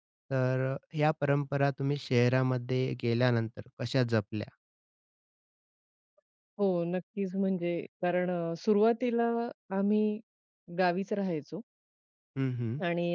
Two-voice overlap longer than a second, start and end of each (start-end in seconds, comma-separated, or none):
none